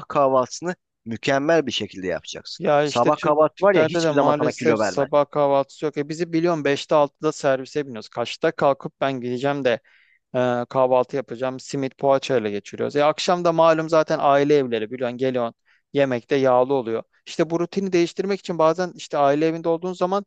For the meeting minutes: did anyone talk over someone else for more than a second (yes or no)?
yes